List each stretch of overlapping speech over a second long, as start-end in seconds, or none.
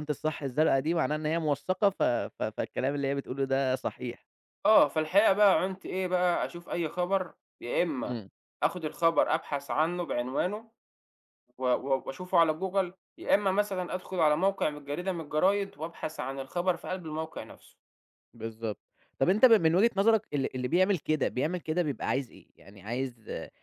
none